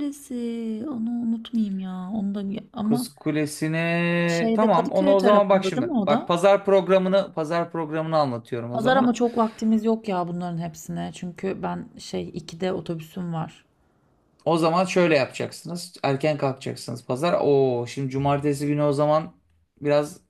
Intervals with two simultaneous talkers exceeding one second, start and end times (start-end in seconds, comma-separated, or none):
4.2-6.3